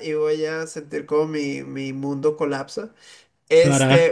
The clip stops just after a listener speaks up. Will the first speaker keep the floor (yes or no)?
yes